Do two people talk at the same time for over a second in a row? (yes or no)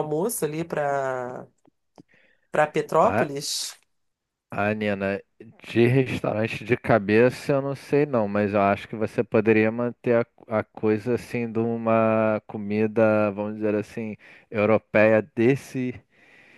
no